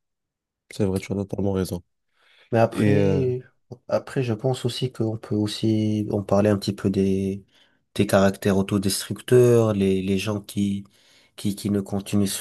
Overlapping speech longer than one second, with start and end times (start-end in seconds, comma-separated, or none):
none